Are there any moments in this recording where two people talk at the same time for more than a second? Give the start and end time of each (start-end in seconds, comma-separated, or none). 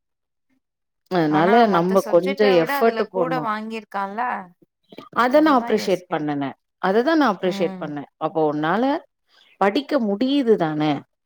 1.4-3.4